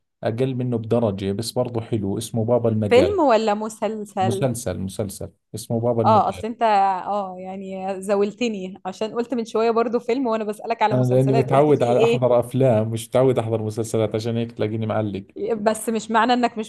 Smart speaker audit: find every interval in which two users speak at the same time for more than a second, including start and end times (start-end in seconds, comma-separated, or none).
10.9-12.2